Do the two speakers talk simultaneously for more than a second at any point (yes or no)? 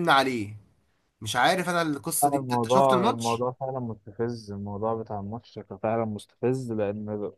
yes